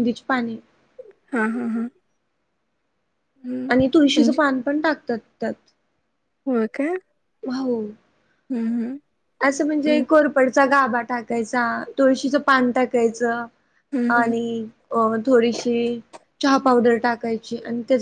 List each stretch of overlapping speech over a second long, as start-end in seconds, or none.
none